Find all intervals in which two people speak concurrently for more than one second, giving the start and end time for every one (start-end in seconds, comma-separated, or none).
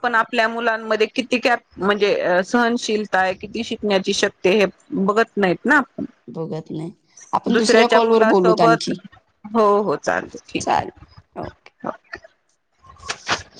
7.5-8.9